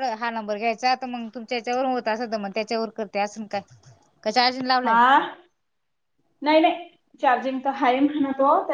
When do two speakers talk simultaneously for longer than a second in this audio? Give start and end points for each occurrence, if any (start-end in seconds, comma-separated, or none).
none